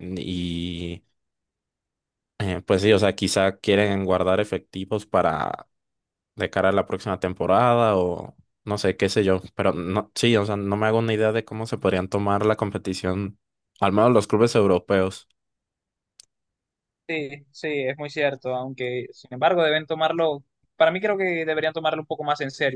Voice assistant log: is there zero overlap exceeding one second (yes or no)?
yes